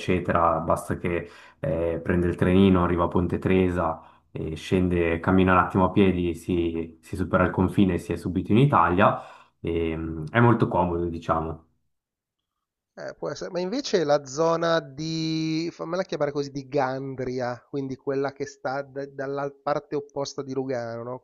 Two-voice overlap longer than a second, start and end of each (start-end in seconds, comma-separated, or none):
none